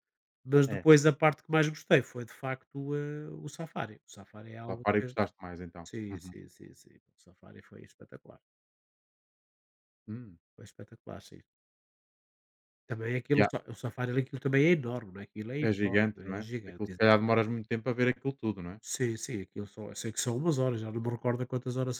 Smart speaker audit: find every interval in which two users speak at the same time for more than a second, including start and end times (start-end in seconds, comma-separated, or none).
15.6-17.5